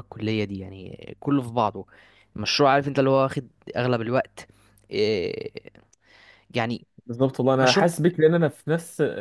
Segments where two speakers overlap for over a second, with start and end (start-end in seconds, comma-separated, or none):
none